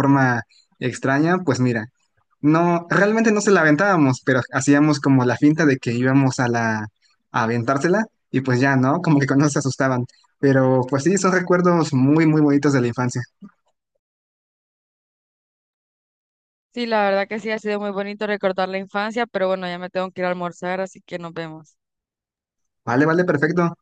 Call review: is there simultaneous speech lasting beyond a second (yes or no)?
no